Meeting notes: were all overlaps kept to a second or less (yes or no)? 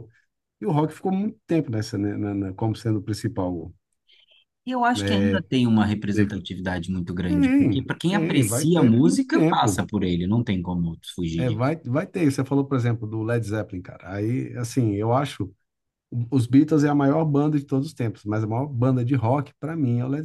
no